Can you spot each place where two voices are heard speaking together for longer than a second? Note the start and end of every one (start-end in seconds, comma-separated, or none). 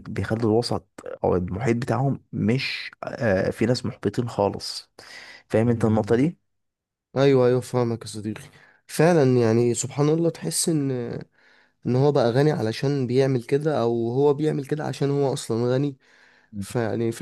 none